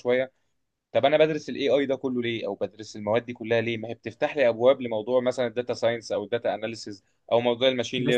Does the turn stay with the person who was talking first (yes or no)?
yes